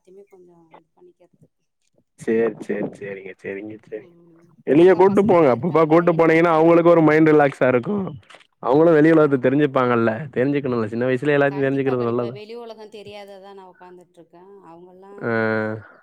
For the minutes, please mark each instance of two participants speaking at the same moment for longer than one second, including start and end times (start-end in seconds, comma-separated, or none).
4.8-7.1